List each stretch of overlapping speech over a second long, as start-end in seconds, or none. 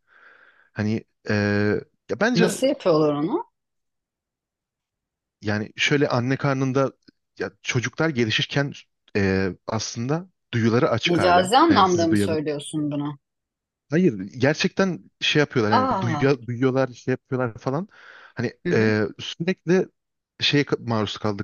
11.1-12.3